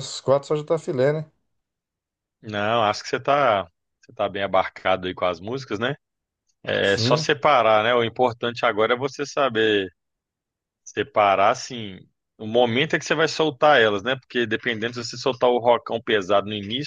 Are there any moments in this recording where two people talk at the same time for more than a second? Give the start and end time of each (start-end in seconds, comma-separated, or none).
none